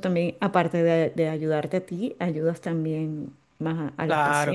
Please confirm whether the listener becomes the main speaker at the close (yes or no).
yes